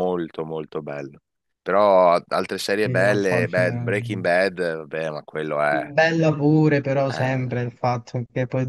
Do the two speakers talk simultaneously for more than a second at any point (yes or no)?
yes